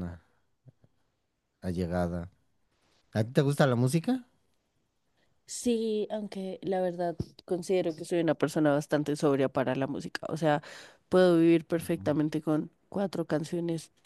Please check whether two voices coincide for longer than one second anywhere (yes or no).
no